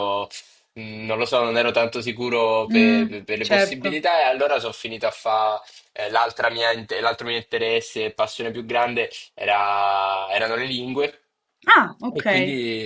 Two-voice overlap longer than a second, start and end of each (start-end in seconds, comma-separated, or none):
2.6-4.0